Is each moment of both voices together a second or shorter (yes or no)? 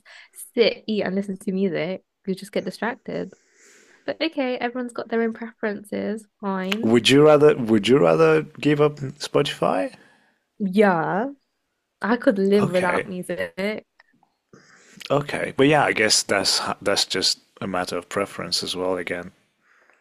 yes